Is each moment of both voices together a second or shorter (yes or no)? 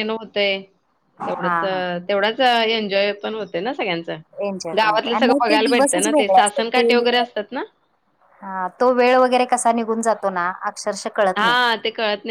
no